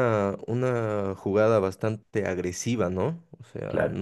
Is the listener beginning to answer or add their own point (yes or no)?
no